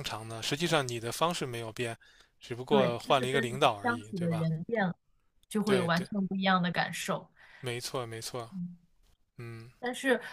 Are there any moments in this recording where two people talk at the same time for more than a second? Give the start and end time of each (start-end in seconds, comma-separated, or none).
2.7-4.5